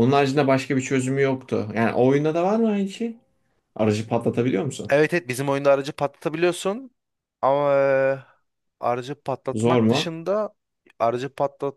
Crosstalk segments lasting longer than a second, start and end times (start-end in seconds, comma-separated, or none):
none